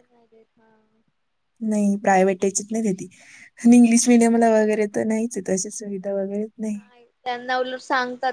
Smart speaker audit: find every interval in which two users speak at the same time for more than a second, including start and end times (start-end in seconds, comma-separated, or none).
none